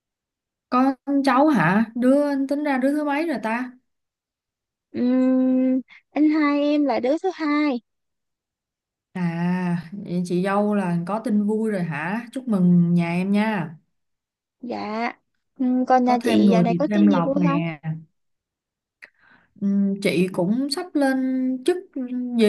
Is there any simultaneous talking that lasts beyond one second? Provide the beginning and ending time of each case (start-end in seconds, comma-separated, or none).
16.0-17.6